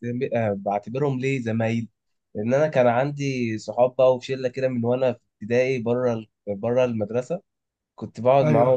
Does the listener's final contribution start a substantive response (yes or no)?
no